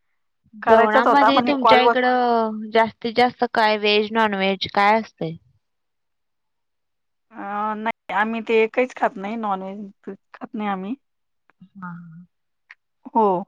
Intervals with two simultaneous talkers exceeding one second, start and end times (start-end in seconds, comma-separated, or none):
0.7-1.9